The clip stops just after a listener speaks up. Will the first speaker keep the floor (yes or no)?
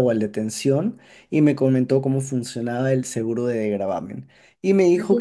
yes